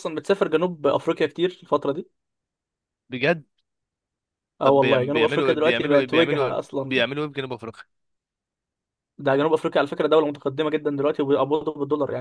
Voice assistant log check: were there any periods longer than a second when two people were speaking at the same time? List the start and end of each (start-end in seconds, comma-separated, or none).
4.6-7.0